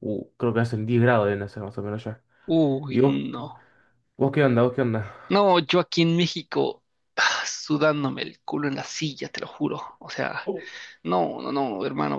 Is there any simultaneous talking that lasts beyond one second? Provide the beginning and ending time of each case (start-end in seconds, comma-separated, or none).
none